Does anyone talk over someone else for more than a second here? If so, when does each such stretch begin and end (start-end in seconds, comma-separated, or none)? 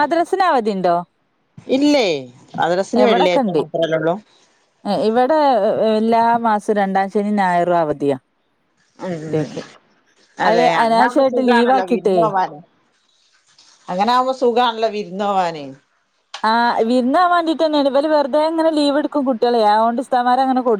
10.5-12.2